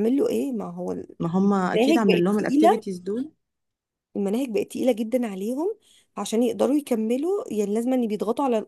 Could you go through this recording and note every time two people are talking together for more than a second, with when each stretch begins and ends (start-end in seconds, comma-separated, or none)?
1.2-2.8